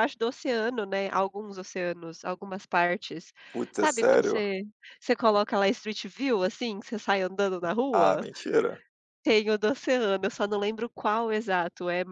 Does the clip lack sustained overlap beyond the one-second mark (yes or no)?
yes